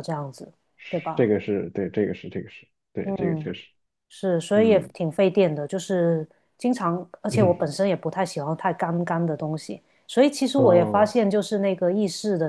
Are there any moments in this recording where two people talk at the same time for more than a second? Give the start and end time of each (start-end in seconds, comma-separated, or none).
none